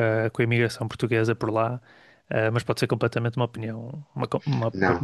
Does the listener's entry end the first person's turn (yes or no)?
yes